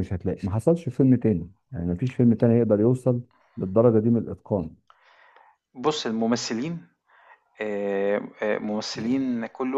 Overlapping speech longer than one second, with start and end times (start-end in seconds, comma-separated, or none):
none